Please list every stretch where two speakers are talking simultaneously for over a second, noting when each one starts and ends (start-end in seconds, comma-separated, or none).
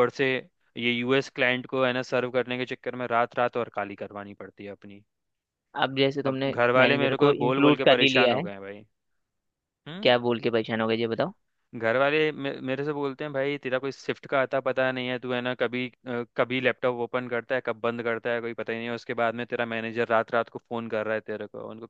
6.2-8.5